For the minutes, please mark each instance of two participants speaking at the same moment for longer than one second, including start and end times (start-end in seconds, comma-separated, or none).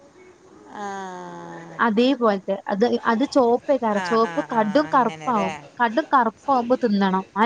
4.0-5.5